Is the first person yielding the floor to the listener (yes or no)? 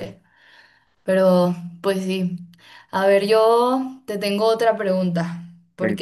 no